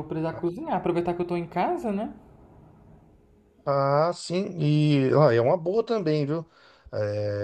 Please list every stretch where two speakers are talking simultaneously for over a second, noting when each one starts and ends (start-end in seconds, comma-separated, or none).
none